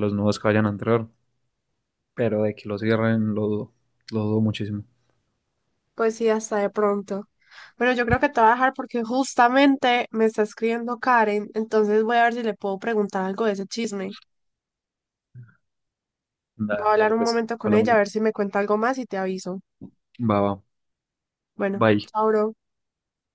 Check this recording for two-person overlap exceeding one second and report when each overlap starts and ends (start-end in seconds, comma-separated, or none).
16.7-17.9